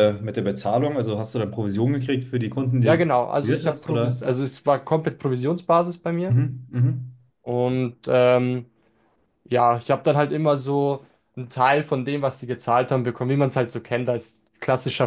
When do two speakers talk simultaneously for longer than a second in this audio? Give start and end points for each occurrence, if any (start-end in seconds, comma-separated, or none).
2.8-4.2